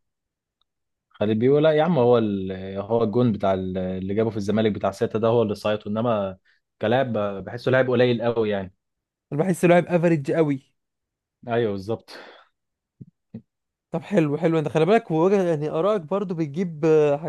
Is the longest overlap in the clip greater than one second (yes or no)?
no